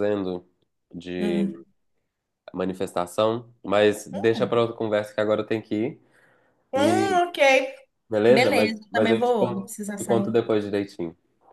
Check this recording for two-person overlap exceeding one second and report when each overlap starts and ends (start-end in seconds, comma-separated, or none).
8.3-10.3